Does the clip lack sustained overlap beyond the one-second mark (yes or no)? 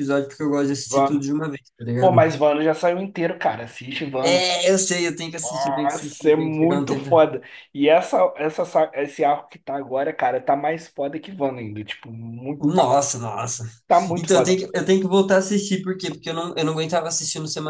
no